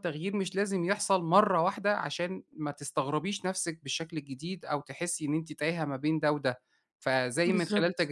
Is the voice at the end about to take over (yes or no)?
no